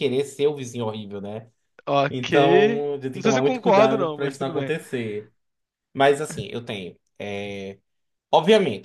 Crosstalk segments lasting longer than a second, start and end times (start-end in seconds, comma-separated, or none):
3.1-4.7